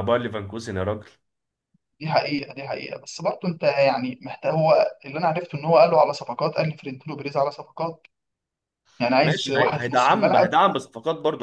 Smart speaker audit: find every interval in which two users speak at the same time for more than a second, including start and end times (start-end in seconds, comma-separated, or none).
9.2-10.5